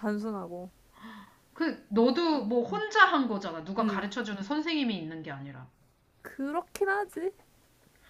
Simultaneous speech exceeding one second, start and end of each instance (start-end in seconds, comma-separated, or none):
none